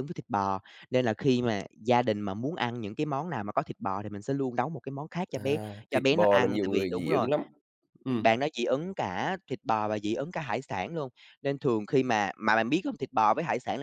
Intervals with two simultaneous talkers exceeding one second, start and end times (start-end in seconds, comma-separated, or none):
5.4-7.3